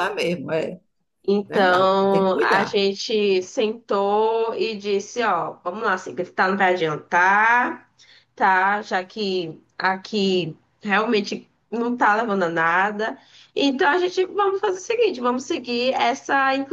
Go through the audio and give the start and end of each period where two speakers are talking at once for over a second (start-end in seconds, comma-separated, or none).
1.5-2.8